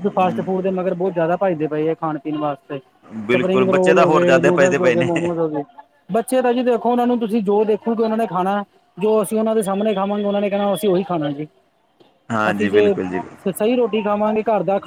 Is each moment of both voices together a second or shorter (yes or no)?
no